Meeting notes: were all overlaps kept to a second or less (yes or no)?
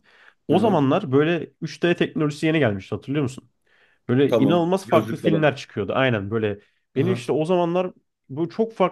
no